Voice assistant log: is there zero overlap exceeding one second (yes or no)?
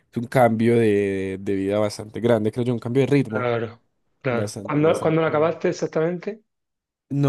no